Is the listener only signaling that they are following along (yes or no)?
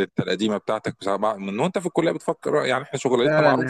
no